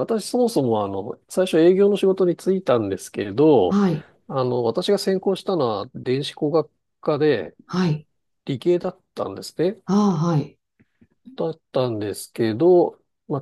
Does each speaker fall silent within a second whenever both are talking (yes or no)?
yes